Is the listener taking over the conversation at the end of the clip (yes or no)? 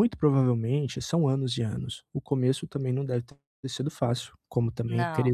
no